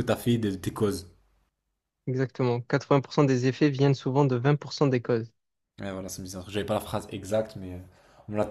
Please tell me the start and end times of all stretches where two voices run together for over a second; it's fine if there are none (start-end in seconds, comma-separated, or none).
none